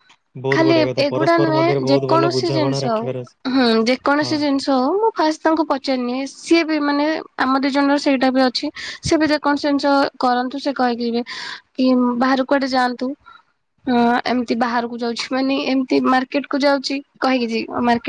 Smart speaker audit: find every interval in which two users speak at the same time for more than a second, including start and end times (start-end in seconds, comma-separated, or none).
0.6-3.0